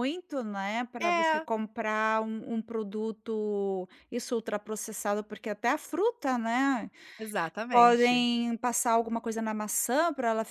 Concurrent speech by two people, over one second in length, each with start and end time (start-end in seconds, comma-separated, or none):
none